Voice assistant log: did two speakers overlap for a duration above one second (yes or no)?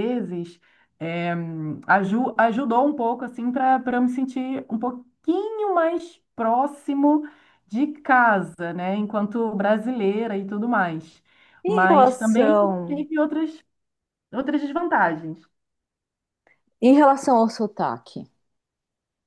yes